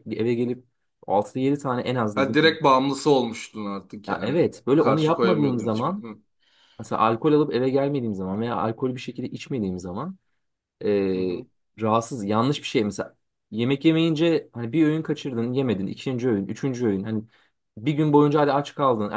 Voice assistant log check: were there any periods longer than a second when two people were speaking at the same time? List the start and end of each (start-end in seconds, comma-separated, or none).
4.1-6.0